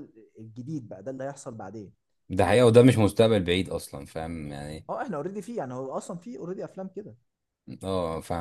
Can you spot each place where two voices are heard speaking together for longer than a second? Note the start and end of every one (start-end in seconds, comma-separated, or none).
none